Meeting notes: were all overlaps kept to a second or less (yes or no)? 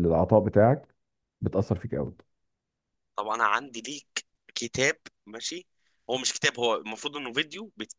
yes